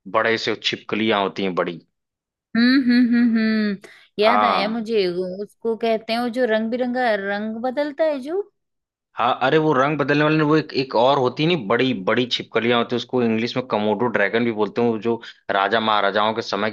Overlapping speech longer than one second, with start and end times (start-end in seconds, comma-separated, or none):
none